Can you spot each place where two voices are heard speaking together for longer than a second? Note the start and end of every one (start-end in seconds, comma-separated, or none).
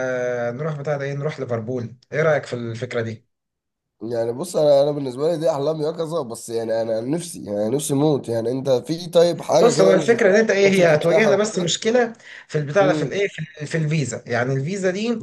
9.6-11.7